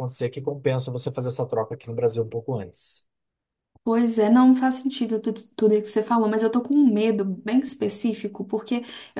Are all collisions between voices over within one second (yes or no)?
yes